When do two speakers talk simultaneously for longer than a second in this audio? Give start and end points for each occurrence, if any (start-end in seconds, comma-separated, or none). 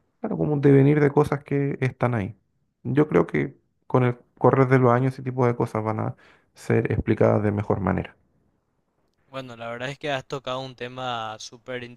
none